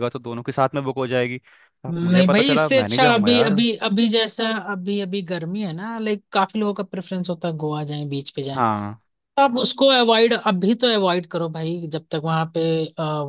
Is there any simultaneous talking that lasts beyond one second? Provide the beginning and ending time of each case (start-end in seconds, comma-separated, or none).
1.9-3.6